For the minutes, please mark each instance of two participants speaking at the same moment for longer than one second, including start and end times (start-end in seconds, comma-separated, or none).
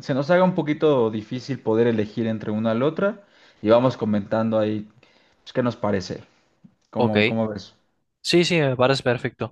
none